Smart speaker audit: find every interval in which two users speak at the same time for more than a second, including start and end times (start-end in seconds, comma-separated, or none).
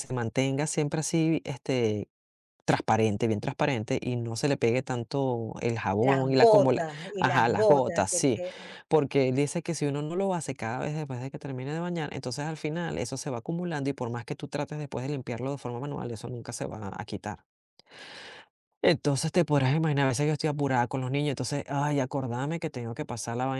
6.0-8.4